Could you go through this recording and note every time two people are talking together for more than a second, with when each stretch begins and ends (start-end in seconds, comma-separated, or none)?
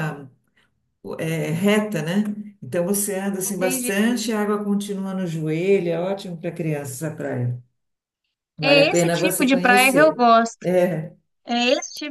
8.6-10.7